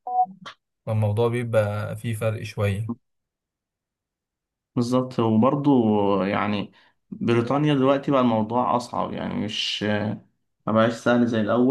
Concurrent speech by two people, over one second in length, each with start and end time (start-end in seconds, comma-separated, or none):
none